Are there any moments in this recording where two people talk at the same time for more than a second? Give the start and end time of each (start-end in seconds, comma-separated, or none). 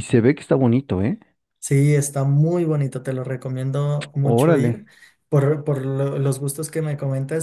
none